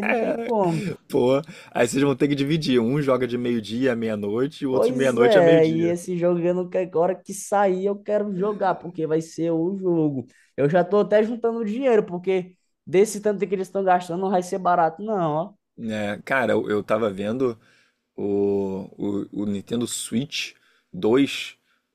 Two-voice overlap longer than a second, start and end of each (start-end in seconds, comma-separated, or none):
4.7-5.9